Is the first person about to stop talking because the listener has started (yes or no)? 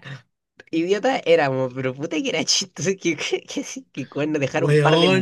no